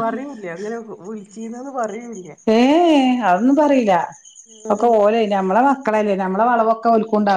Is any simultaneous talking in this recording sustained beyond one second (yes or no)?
no